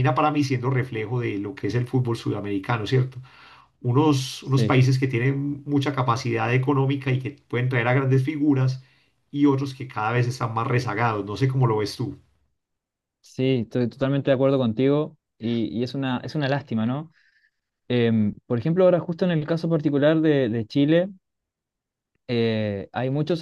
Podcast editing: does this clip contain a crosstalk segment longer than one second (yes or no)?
no